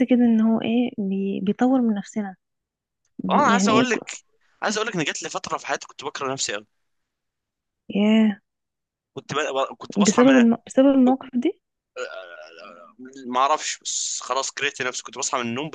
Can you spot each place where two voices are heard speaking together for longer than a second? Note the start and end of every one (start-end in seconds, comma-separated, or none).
none